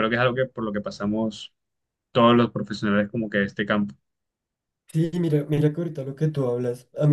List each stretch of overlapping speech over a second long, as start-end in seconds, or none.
none